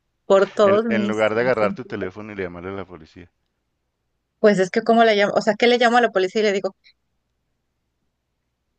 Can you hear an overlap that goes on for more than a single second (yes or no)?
yes